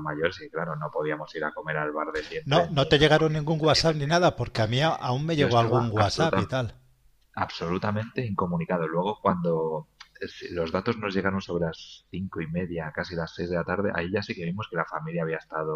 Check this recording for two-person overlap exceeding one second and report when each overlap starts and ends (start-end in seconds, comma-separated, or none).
2.5-4.1, 5.4-6.6